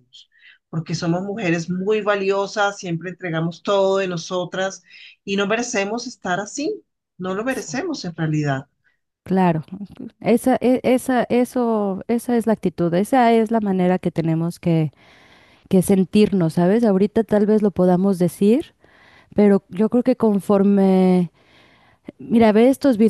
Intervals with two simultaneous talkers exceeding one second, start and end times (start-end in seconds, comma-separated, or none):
none